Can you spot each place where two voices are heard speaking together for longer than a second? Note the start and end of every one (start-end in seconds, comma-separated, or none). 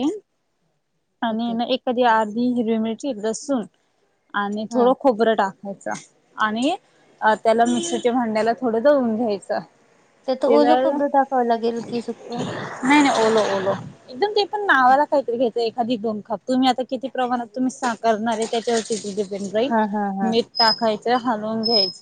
none